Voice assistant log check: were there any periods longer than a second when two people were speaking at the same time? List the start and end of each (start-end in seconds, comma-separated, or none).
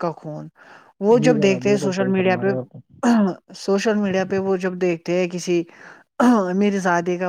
1.2-2.8